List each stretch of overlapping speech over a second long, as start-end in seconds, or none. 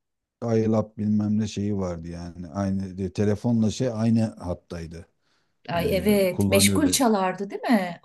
5.8-7.0